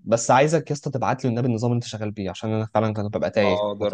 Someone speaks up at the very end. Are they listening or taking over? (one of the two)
taking over